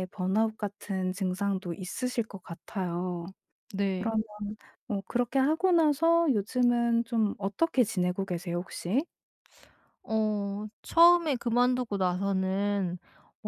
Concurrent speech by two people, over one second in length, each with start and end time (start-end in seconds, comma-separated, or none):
none